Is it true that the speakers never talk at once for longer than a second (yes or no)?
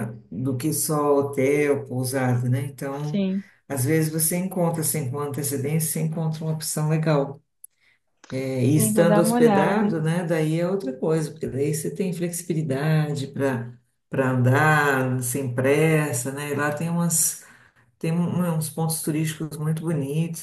no